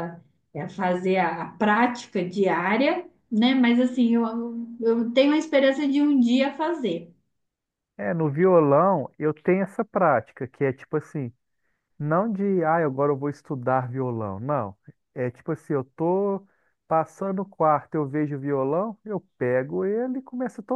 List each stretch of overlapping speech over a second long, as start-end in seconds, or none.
none